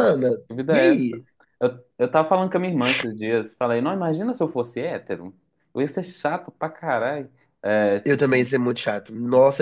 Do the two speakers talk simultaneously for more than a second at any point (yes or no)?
no